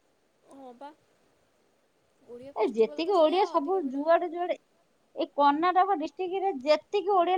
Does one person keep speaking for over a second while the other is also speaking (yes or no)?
yes